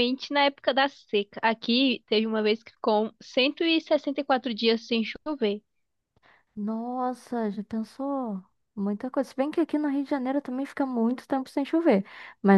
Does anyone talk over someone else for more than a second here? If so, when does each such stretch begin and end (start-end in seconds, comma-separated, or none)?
none